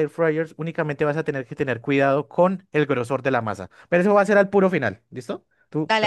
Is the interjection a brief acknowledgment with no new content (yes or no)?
yes